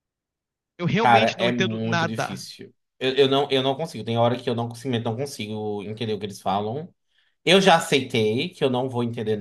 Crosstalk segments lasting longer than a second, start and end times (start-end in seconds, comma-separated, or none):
1.0-2.4